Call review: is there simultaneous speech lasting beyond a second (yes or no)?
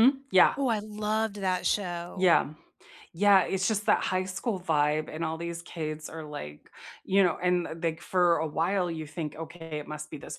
no